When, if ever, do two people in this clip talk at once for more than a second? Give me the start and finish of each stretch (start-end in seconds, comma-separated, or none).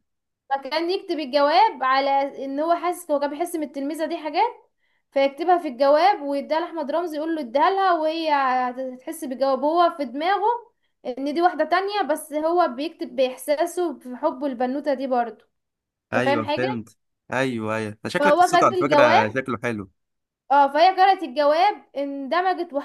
18.2-19.4